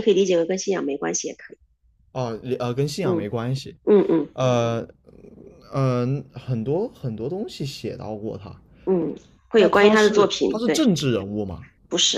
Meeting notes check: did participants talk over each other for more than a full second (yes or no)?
yes